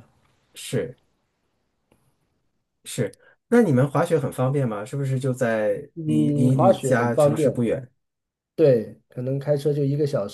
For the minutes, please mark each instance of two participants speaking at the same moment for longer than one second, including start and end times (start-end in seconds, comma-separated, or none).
5.9-7.6